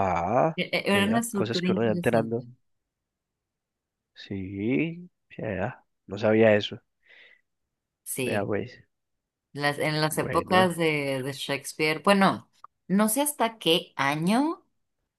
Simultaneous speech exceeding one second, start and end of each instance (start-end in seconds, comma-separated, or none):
0.6-2.4